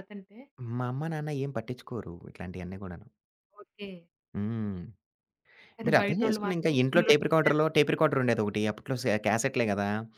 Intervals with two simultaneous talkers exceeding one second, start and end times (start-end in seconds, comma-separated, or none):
5.8-7.7